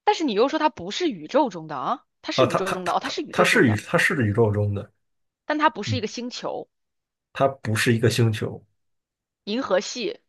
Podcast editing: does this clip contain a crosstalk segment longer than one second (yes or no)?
yes